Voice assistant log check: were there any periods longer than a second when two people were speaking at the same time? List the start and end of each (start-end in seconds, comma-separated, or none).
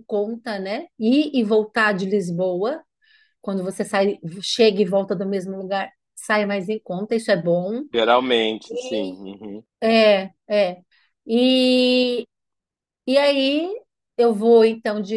none